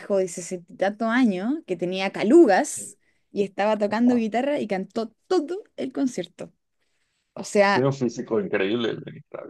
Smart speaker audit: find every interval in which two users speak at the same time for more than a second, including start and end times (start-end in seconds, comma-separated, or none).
none